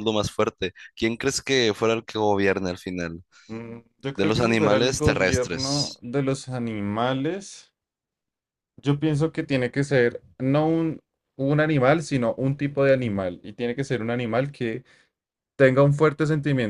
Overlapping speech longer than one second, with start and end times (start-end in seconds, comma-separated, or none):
4.1-6.0